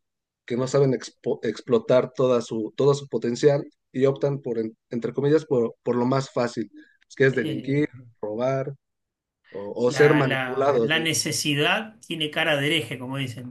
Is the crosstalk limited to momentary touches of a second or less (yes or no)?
no